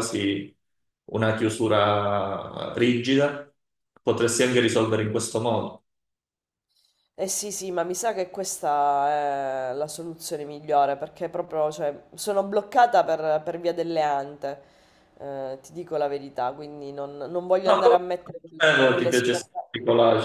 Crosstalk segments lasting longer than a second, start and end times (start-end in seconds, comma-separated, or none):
17.7-19.6